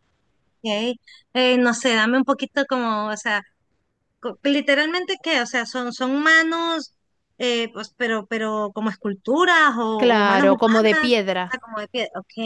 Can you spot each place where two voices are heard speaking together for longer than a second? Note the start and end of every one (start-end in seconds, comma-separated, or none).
9.9-11.4